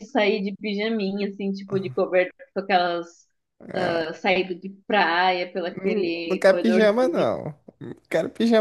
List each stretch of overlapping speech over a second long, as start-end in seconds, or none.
5.7-7.4